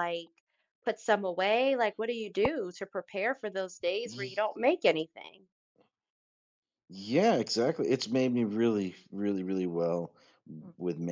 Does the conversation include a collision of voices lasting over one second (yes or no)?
no